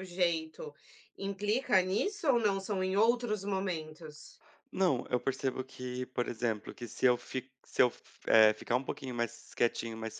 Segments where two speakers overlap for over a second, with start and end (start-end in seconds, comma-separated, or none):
none